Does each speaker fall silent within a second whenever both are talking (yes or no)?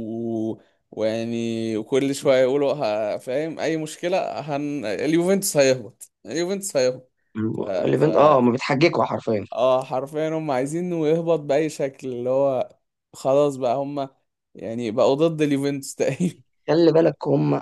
yes